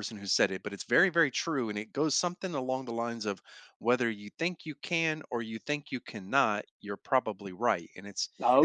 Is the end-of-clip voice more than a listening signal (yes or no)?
no